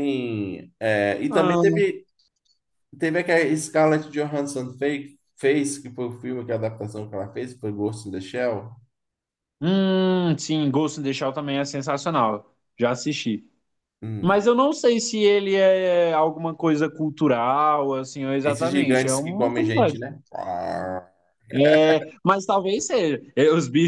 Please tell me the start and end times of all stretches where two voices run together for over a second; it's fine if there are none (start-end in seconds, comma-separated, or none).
18.4-20.0